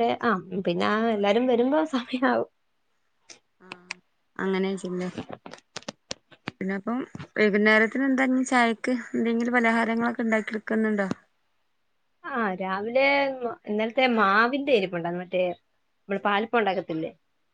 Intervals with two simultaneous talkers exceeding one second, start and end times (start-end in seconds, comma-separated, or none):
none